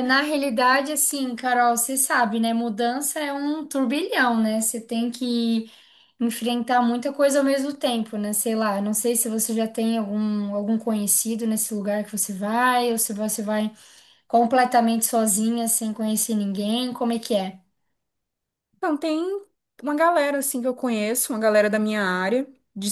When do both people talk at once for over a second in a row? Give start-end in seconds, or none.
none